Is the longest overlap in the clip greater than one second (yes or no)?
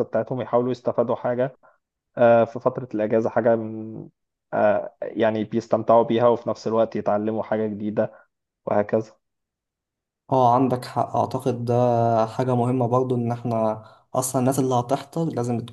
no